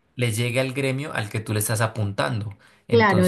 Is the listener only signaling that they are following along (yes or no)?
no